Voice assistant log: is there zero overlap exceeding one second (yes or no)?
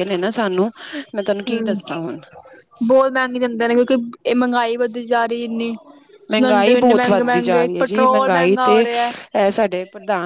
no